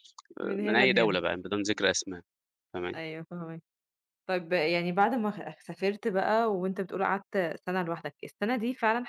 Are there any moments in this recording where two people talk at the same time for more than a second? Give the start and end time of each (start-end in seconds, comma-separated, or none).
none